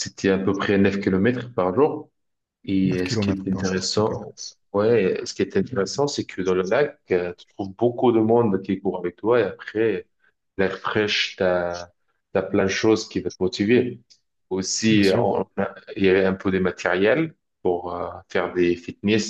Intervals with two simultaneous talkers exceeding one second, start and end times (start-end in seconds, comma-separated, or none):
2.8-4.2